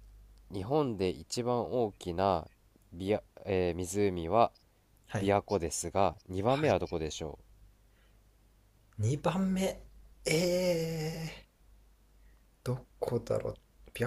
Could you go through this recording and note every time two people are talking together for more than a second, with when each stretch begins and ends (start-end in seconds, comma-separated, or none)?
none